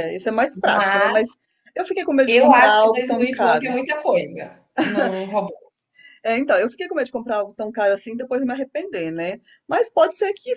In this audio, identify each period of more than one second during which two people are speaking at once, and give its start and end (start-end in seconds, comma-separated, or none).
2.2-3.8